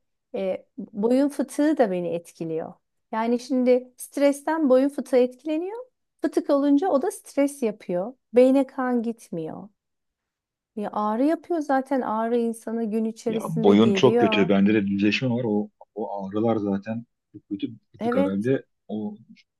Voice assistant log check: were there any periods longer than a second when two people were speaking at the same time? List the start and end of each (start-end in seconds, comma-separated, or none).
13.3-14.5